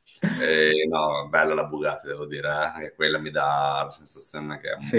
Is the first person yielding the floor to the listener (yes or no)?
no